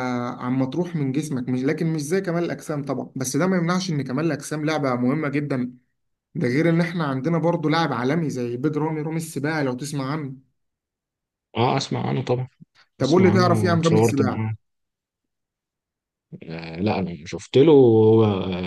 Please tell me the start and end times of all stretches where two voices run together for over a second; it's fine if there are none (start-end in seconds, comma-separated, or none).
13.0-14.4